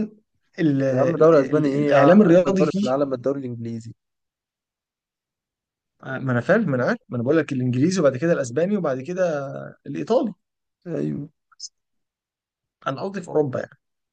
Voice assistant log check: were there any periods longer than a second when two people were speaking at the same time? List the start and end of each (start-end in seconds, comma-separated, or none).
0.9-2.9